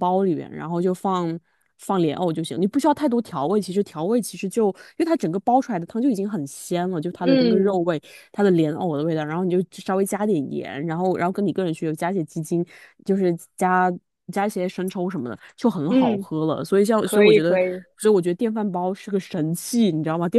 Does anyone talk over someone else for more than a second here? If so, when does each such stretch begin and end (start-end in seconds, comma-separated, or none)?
none